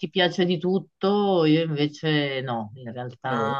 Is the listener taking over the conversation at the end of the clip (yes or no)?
no